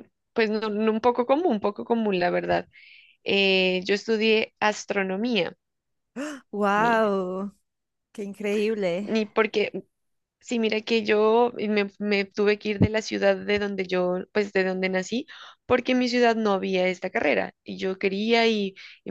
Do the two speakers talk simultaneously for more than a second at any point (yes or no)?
no